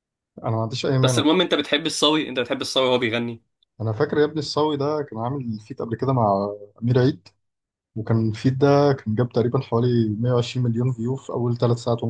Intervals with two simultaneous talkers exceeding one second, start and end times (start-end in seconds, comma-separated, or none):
none